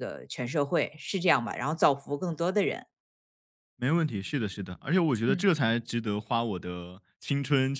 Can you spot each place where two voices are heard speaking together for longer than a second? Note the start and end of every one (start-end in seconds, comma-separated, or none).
none